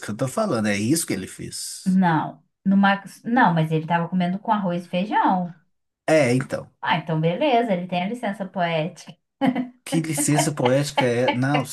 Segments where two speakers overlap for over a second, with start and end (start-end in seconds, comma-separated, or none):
none